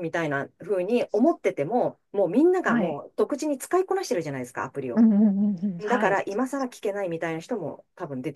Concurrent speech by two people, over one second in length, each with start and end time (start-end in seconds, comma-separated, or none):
none